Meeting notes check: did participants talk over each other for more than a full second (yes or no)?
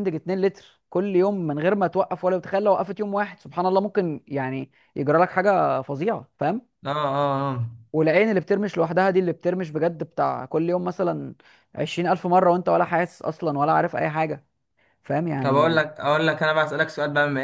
no